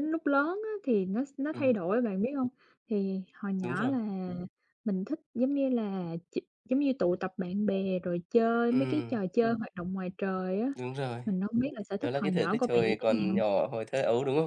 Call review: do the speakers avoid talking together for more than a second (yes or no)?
no